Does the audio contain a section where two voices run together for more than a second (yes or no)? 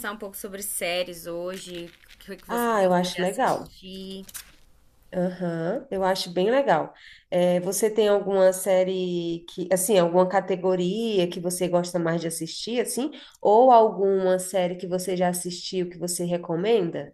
yes